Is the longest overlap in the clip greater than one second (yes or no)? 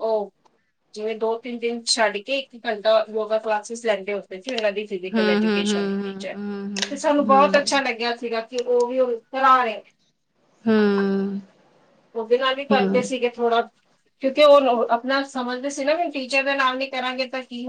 yes